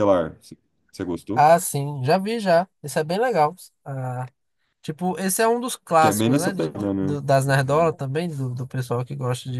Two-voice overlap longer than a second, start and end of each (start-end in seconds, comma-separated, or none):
6.0-7.2